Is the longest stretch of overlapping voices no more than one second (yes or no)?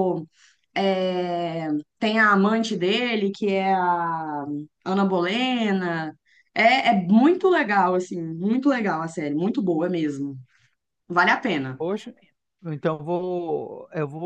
yes